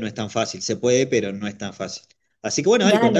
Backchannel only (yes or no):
yes